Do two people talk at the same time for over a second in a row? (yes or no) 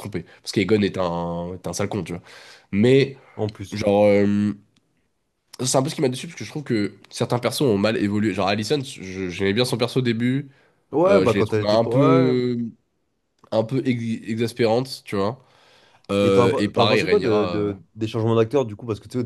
yes